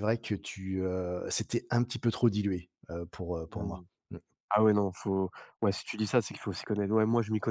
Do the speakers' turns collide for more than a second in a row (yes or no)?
no